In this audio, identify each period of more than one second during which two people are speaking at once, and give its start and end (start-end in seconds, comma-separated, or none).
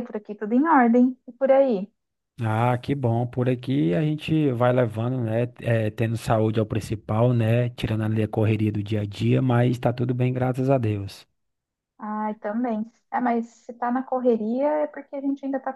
none